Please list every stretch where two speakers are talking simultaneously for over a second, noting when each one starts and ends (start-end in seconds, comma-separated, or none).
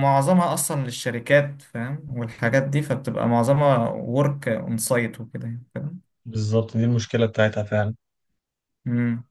none